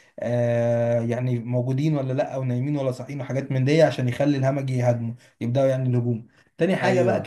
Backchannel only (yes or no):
yes